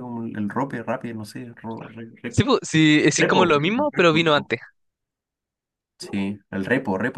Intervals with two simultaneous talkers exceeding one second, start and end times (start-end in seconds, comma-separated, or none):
3.2-4.5